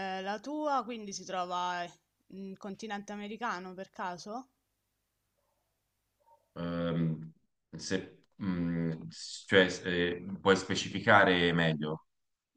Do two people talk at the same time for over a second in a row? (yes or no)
no